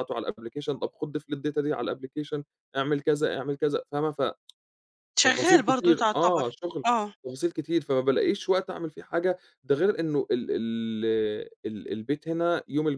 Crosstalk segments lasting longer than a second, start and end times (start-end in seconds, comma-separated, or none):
5.2-6.5